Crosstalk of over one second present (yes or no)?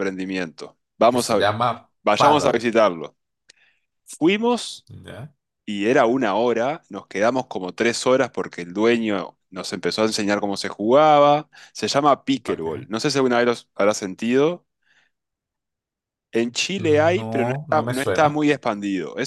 yes